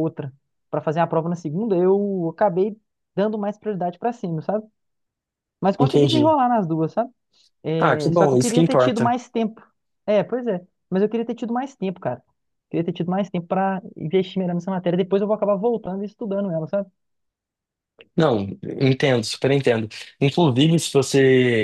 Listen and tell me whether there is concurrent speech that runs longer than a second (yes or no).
yes